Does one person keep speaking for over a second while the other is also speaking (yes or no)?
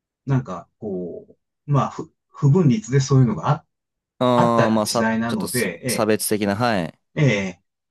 yes